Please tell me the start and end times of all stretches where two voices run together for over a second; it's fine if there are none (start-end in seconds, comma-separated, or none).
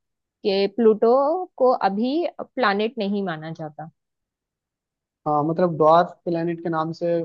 none